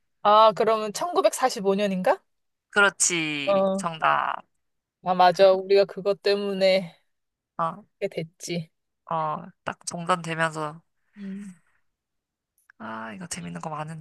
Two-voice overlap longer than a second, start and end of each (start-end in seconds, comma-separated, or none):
none